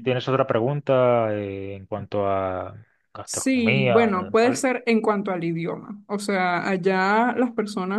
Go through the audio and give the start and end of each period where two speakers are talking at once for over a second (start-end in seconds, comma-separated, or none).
3.2-4.7